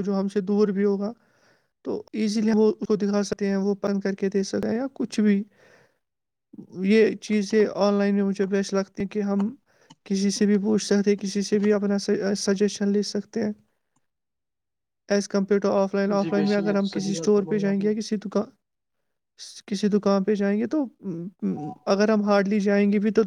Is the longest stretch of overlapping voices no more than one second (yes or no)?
no